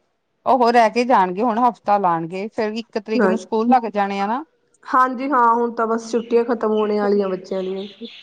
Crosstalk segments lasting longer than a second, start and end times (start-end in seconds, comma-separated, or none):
none